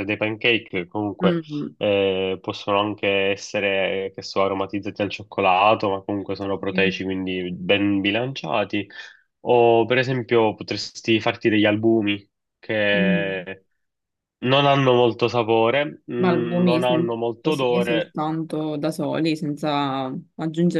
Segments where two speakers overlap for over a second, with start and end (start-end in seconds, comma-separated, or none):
16.6-18.2